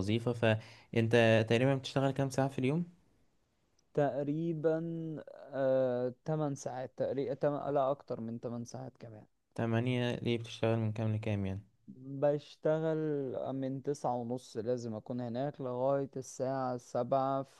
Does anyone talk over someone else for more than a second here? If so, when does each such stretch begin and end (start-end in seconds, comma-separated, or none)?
none